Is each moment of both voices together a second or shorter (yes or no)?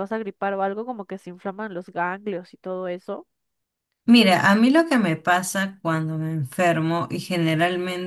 yes